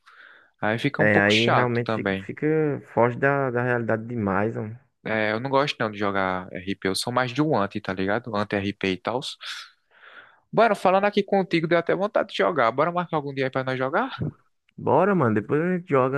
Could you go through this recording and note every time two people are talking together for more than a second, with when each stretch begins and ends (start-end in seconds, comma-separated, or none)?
1.0-2.3